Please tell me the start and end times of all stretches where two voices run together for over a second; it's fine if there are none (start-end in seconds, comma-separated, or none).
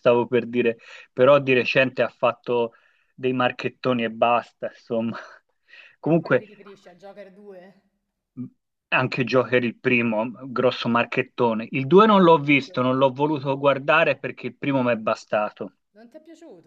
11.9-13.7